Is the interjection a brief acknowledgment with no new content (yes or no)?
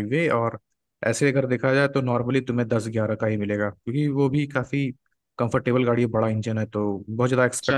no